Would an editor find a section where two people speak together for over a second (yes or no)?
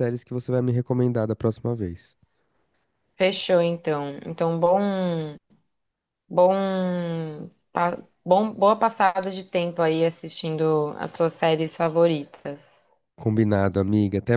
no